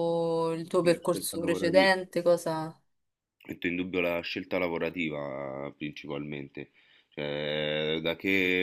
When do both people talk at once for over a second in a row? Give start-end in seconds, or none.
0.8-2.0